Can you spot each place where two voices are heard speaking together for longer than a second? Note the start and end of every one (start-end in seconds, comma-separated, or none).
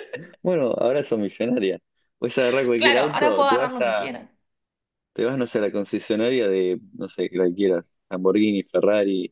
2.8-4.1